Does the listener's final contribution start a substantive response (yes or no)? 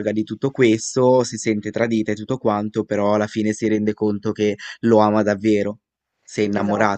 yes